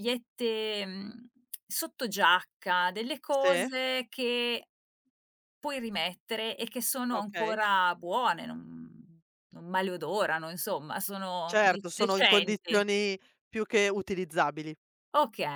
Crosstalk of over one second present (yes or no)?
yes